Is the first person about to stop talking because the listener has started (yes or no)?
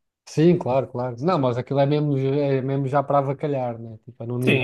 yes